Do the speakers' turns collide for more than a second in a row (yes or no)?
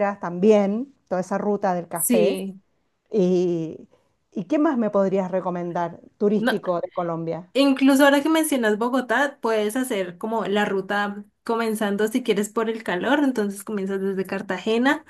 no